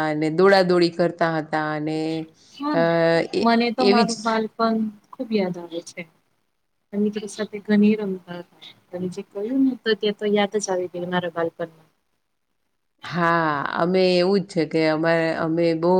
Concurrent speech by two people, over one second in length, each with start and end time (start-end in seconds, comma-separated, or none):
none